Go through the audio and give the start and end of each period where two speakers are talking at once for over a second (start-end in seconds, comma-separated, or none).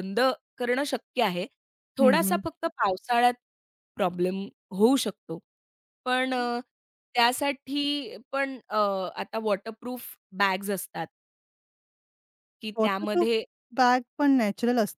none